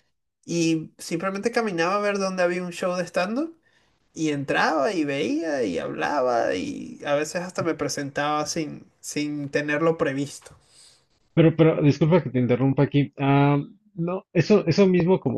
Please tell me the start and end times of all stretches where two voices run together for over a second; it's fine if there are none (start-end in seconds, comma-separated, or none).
none